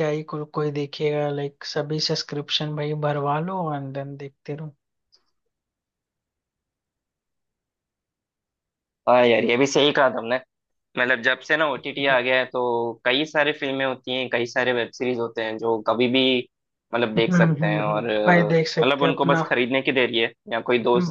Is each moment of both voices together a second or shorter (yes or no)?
no